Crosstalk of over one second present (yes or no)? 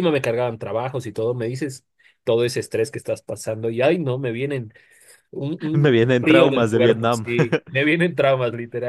yes